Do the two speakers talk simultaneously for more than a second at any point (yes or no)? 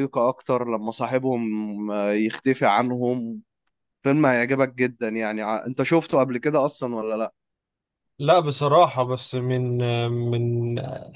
no